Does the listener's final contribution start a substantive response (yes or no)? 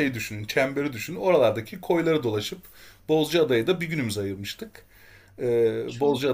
no